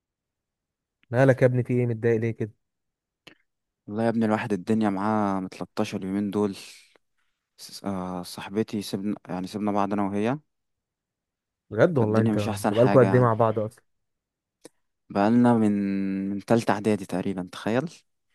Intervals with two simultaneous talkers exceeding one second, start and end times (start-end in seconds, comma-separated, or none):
12.0-13.4